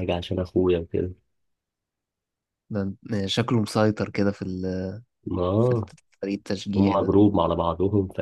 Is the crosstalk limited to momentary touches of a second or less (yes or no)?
yes